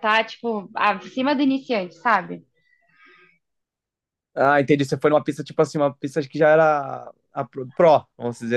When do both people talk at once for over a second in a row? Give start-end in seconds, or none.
none